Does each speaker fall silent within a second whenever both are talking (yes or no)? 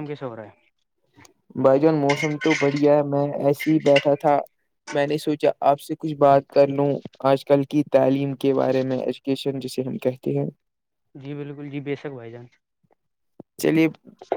yes